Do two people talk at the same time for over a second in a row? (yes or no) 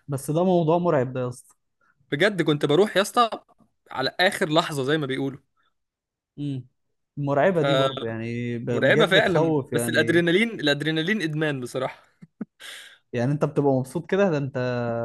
yes